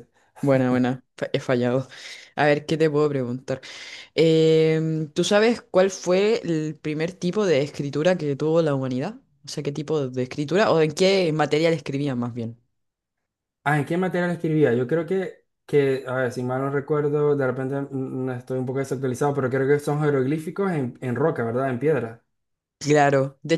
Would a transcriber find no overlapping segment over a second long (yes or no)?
yes